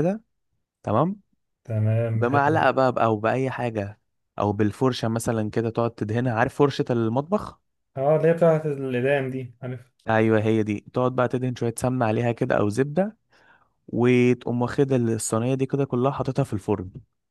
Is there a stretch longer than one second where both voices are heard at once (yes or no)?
no